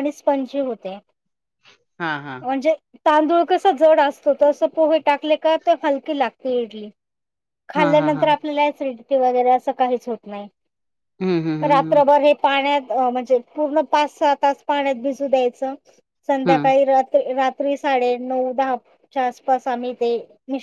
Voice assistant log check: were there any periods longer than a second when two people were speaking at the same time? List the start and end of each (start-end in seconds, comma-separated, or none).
none